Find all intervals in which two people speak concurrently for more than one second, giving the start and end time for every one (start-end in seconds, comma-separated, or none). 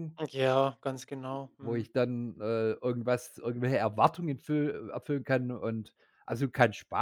none